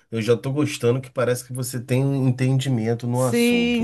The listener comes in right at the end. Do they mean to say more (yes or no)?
yes